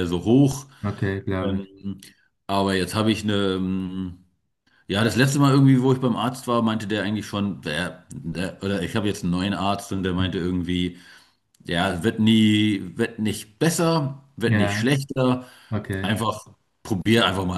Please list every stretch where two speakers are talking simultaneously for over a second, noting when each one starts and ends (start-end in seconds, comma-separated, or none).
none